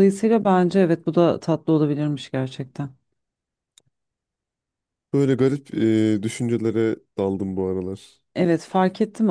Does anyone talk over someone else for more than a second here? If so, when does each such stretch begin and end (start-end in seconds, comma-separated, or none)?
none